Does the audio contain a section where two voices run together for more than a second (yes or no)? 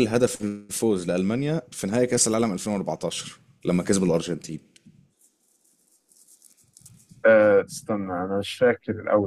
no